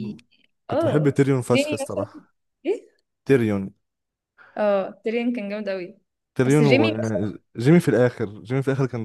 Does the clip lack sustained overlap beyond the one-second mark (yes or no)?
no